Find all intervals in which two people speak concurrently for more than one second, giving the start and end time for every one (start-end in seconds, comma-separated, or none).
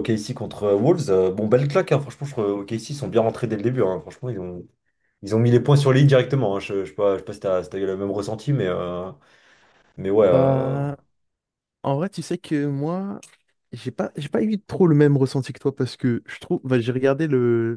none